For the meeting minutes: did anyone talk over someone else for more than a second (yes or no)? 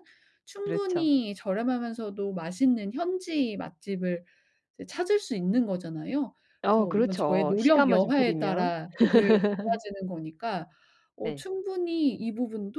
yes